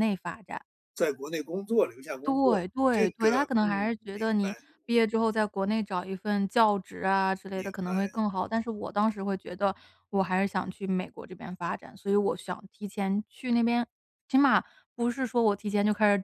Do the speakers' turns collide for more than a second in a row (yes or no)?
yes